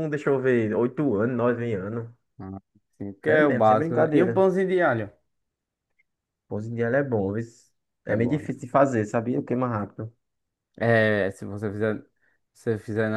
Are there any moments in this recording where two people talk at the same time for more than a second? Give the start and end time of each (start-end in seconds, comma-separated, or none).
3.3-4.5